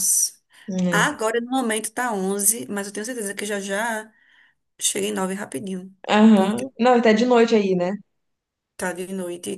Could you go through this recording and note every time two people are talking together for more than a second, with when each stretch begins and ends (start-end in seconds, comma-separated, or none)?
none